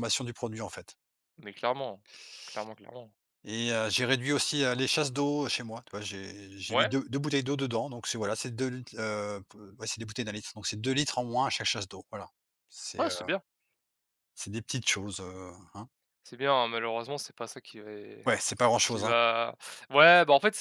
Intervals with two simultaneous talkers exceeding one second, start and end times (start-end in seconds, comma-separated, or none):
none